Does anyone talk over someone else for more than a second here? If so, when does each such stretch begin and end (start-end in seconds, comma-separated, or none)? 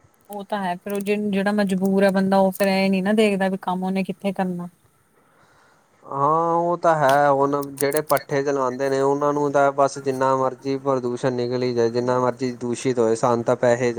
none